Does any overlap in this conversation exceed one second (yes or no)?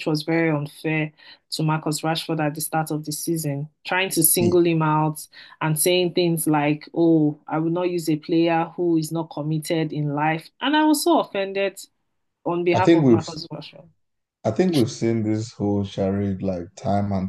no